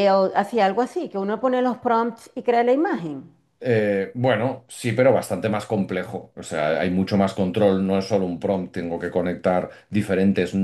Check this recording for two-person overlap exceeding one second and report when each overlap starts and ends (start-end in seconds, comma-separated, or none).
none